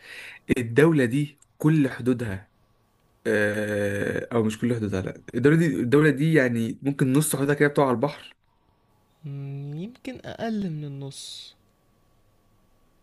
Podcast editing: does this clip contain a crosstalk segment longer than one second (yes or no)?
no